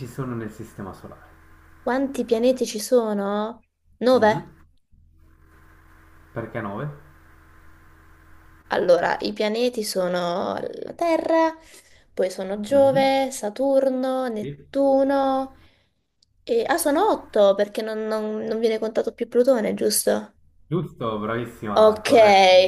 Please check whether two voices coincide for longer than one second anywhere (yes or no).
no